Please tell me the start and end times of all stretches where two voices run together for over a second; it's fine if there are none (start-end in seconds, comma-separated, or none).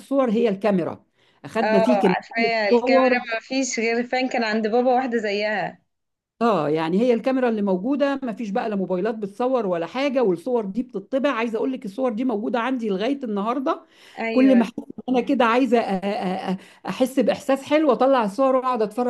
1.6-3.2